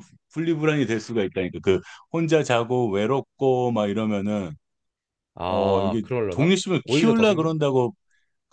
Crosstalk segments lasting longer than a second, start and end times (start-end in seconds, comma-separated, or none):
5.4-7.5